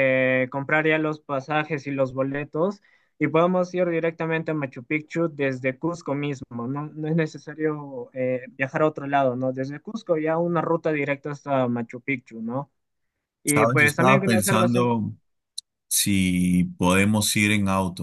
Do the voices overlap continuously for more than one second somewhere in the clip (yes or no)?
yes